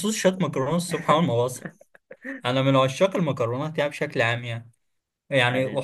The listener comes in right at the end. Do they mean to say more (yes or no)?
no